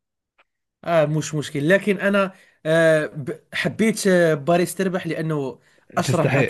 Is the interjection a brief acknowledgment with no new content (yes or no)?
no